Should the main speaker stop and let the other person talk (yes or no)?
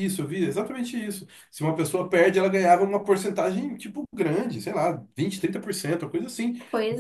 no